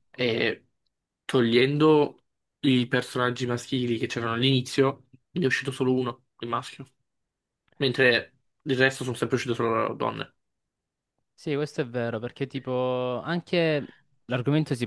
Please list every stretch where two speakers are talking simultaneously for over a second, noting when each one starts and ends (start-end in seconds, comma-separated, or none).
none